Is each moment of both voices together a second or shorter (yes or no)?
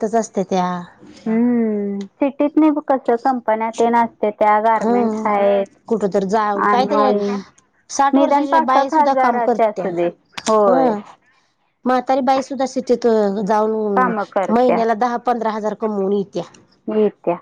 no